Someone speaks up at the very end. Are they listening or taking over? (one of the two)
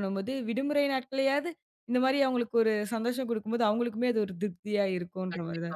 taking over